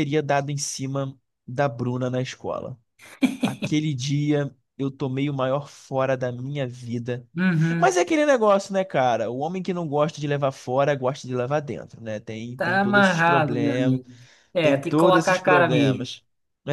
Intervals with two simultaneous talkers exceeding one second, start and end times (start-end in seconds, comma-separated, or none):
12.6-14.0, 14.6-16.1